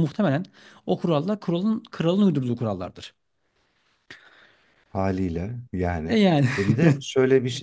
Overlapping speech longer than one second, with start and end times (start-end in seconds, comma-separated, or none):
none